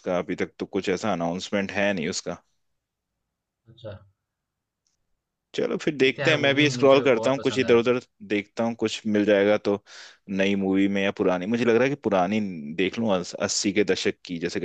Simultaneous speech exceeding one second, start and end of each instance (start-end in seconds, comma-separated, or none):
6.0-7.9